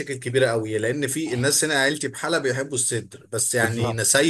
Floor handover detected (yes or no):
no